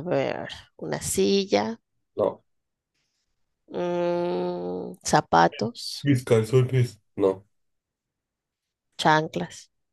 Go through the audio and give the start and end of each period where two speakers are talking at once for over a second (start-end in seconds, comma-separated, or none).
none